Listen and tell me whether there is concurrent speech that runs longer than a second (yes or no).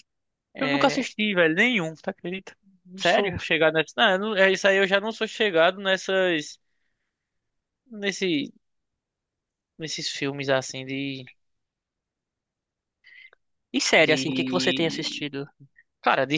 yes